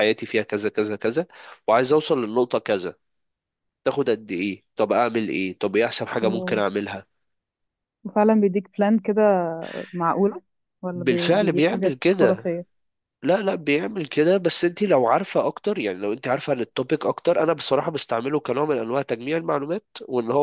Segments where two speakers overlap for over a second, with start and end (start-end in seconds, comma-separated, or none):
10.9-12.5